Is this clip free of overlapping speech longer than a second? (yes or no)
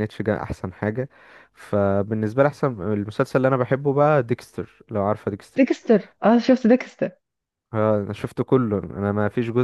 yes